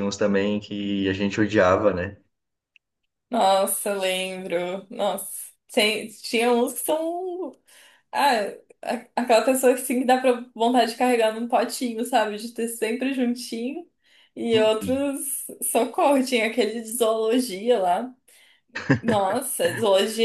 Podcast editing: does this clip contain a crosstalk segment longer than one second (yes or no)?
no